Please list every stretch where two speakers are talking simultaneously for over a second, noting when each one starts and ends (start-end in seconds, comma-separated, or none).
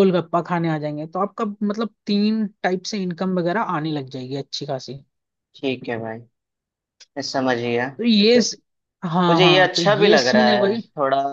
9.3-10.8